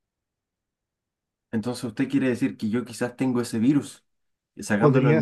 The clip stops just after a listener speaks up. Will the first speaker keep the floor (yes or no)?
yes